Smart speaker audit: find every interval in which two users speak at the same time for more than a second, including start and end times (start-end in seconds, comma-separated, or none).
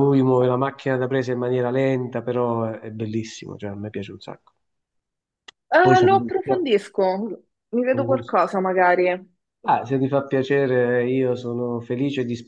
none